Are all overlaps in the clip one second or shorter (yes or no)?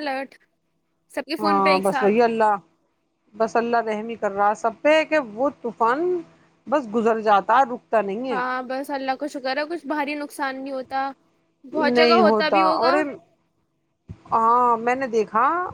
yes